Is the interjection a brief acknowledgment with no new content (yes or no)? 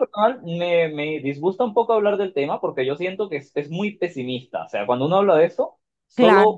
yes